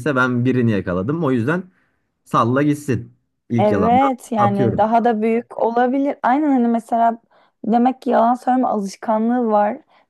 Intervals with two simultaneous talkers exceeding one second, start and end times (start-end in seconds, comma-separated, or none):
3.6-4.9